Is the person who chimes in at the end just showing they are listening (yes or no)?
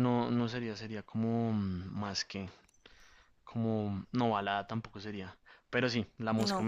yes